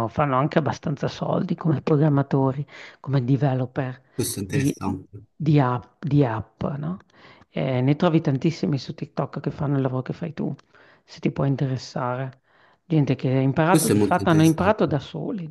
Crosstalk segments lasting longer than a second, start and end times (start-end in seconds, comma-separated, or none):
13.7-15.0